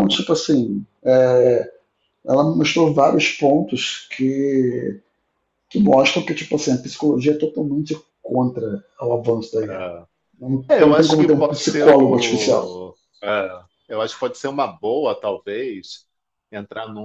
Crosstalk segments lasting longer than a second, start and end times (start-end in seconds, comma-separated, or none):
10.7-12.7